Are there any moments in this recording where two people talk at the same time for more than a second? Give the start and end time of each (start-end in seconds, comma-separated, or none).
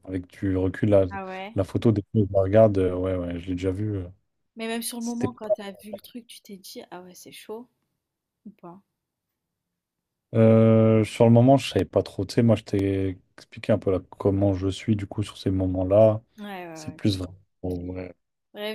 none